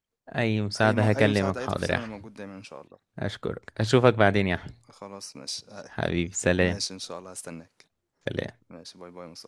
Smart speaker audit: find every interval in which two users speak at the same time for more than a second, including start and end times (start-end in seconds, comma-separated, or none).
0.8-2.3